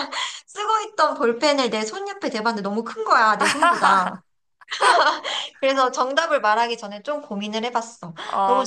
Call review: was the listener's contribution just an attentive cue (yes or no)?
no